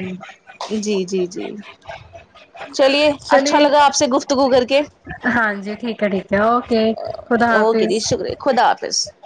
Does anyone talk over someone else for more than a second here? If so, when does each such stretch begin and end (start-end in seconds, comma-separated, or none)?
none